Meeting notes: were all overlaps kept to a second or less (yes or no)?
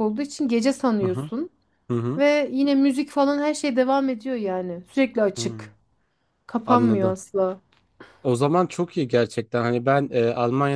yes